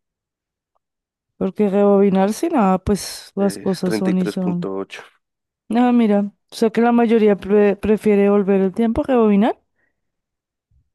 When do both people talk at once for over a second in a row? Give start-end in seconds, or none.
3.4-4.7